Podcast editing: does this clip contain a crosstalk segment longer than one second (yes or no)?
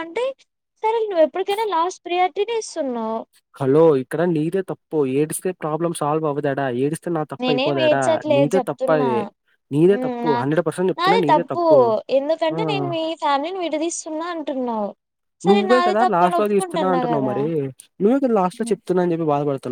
no